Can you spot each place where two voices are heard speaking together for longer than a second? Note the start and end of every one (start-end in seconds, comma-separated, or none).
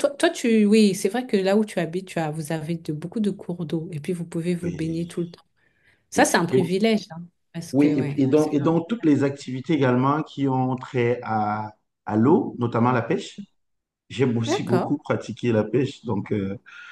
7.7-9.1